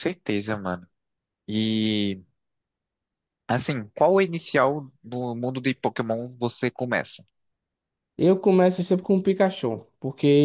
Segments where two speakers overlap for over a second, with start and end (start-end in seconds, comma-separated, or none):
none